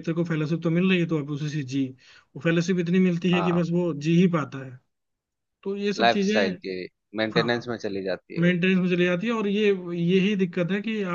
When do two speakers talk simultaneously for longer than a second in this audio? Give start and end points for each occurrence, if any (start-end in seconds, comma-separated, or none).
none